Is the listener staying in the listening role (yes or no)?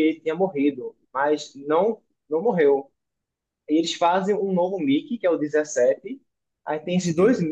yes